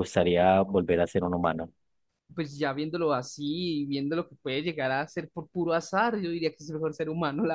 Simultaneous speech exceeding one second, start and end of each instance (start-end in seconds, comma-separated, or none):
none